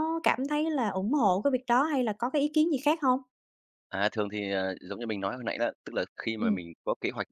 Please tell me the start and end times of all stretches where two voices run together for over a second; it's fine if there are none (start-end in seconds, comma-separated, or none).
none